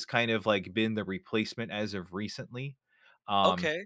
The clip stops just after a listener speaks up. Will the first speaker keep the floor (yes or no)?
no